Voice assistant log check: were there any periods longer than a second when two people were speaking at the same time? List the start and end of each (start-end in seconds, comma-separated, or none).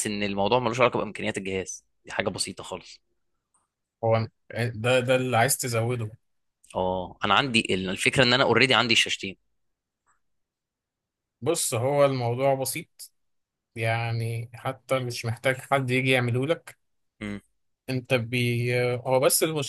none